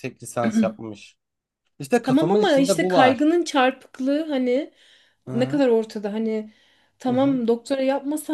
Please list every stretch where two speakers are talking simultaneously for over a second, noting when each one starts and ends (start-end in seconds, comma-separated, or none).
2.0-3.3